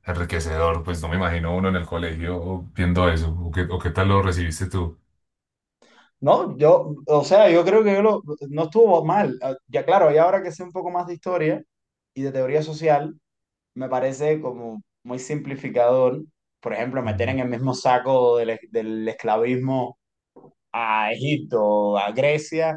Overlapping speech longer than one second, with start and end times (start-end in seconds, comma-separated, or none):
none